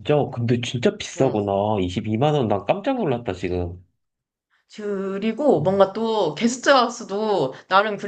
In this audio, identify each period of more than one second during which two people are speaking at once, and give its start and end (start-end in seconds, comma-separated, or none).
none